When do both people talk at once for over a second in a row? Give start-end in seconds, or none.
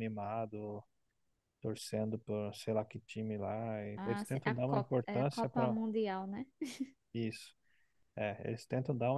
4.0-5.7